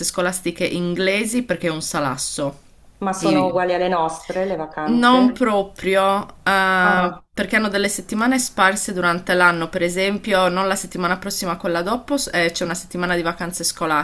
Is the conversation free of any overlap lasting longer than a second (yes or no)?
yes